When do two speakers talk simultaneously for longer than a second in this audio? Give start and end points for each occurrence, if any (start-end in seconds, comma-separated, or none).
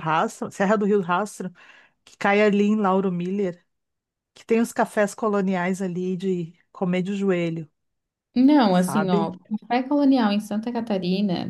none